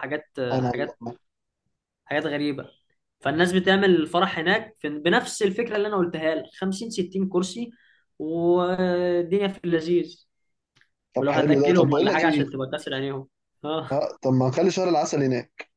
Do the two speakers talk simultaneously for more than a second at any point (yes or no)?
yes